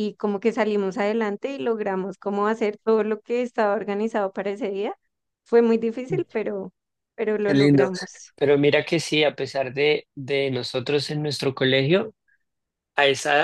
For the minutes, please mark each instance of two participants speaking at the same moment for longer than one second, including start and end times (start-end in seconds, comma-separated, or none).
none